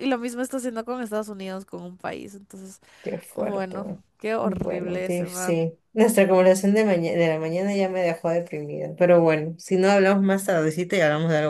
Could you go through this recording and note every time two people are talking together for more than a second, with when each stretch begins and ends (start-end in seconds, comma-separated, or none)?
4.4-5.6